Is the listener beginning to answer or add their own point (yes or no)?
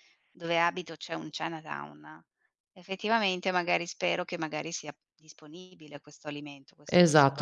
yes